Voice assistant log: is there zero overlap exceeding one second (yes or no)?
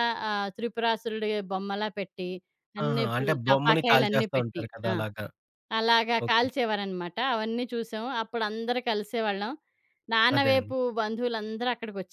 no